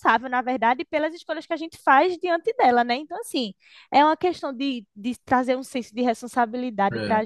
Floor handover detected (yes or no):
no